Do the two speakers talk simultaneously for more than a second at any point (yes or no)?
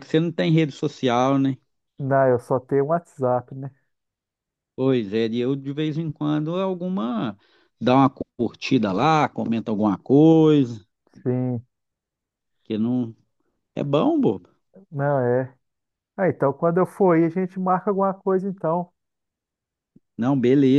no